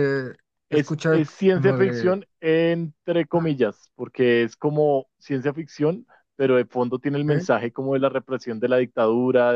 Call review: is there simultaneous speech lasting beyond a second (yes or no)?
yes